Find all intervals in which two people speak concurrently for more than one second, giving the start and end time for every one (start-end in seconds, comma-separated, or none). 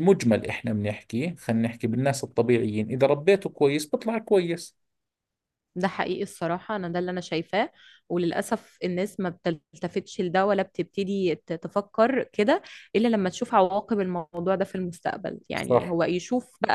none